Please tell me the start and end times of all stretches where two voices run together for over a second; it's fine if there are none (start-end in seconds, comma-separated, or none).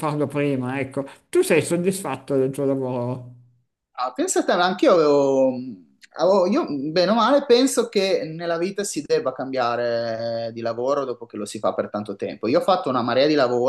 none